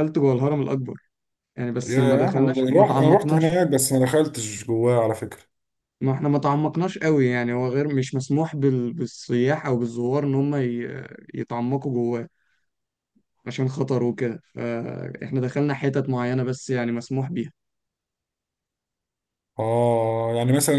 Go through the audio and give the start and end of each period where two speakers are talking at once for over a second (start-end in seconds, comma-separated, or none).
1.9-3.7